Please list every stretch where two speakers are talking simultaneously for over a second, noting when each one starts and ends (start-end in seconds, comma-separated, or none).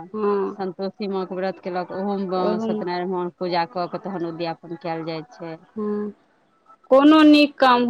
none